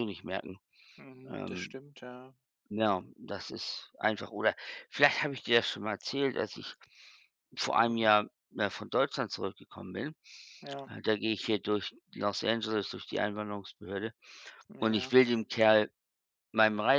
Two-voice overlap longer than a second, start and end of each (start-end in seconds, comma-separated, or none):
none